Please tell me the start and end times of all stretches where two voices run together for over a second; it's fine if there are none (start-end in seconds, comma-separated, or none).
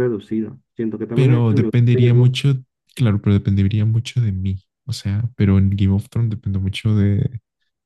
1.1-2.3